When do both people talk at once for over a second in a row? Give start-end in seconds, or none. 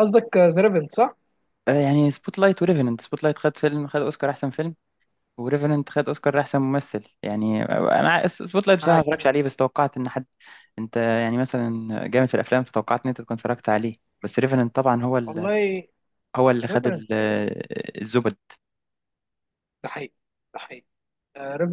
none